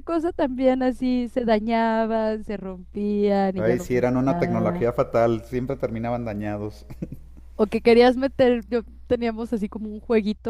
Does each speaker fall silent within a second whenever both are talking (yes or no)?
no